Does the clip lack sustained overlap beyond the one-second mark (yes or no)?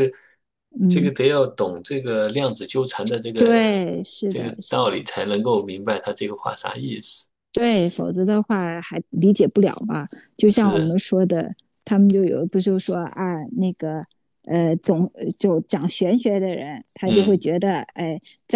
yes